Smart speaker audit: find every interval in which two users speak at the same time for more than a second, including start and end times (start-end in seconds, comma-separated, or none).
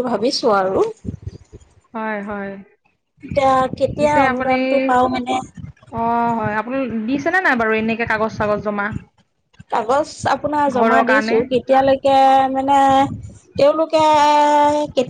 none